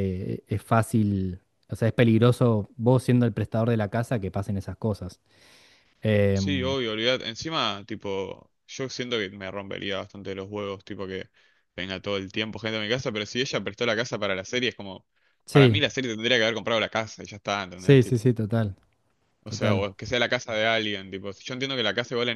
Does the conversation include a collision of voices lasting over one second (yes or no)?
no